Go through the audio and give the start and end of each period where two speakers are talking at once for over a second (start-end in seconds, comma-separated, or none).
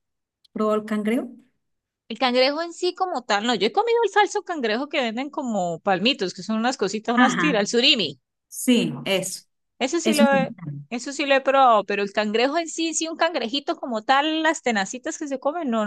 none